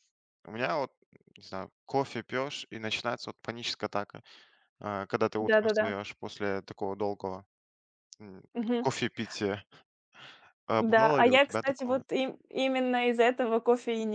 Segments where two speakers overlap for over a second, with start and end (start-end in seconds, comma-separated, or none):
10.8-12.0